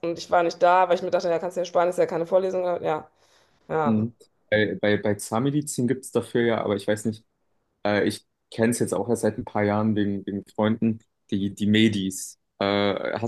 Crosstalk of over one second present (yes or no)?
no